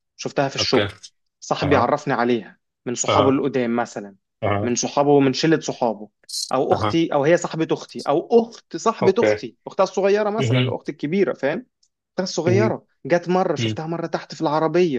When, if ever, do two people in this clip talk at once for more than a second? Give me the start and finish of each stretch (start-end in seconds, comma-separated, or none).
none